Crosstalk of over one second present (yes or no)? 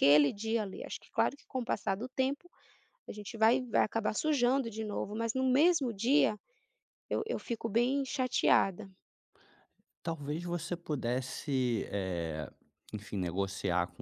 no